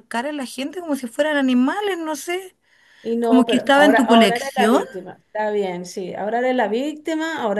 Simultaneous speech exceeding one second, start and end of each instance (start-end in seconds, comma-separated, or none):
3.2-4.8